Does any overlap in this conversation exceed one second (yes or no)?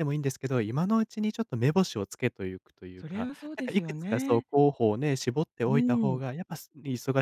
yes